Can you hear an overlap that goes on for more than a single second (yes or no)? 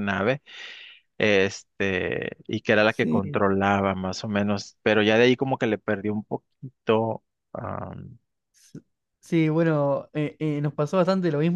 no